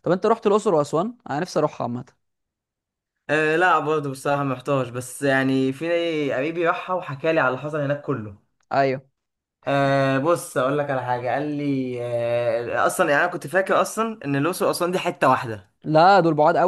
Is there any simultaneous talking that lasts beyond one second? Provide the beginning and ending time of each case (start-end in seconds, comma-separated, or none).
none